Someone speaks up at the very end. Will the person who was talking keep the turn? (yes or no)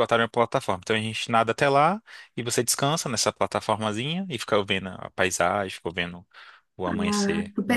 no